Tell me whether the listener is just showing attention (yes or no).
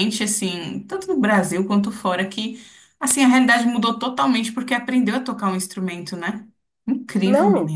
no